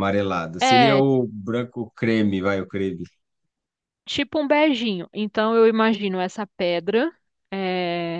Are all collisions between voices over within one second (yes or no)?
yes